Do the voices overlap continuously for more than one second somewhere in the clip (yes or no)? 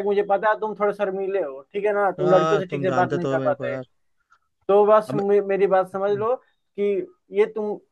yes